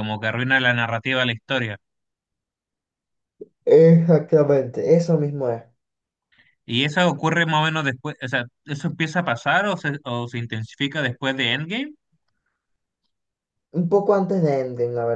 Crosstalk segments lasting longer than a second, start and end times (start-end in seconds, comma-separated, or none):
none